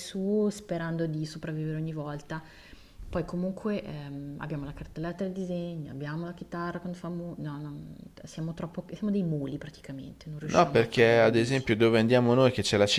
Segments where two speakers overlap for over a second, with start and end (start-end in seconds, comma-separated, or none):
10.5-11.7